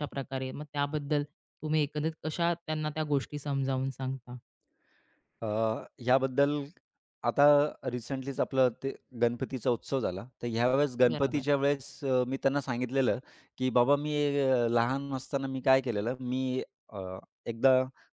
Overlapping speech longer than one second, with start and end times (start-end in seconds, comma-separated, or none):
none